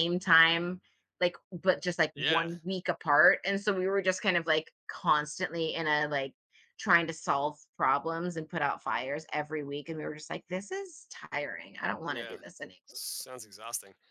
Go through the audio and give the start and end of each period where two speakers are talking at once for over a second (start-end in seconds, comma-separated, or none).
none